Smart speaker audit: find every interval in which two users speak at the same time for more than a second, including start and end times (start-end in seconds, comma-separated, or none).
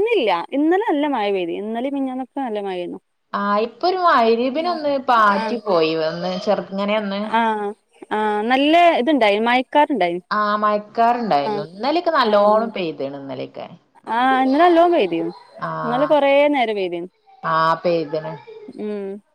none